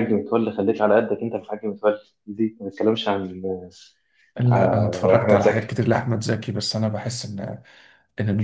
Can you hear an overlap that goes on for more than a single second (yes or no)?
yes